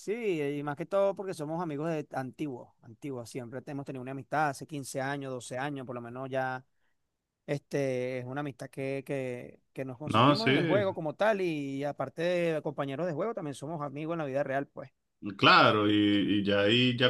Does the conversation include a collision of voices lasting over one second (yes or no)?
no